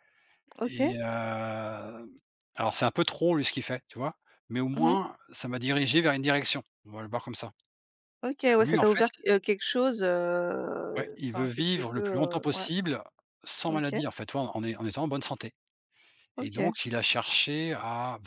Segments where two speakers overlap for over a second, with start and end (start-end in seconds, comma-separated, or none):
11.0-12.7